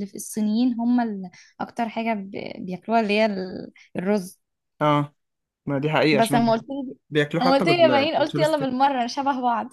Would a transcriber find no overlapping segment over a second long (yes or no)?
no